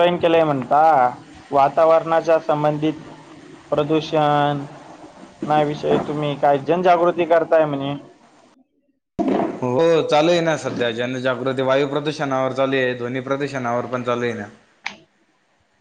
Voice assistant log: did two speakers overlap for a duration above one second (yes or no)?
no